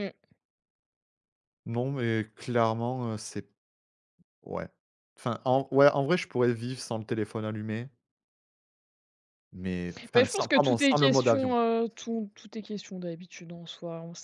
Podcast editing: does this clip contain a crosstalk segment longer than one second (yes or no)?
yes